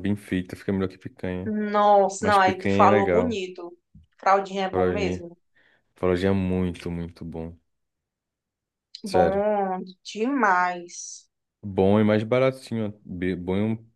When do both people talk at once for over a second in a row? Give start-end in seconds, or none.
2.2-3.4